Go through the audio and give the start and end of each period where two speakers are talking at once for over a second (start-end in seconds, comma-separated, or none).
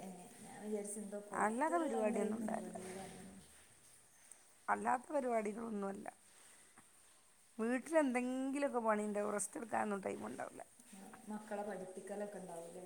1.4-2.8